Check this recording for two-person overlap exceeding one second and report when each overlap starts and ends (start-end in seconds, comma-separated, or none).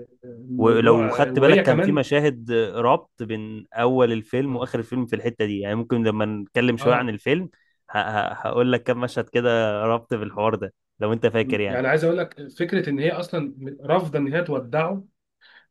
0.6-2.0